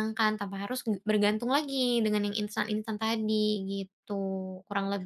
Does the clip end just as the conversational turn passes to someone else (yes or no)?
yes